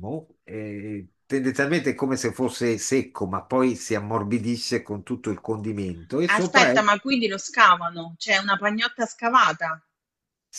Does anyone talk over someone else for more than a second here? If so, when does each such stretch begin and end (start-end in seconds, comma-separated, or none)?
none